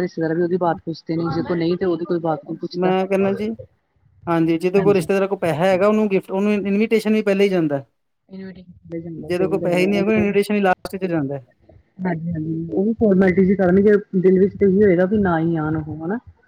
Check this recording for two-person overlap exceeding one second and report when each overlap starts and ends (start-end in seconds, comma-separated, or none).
none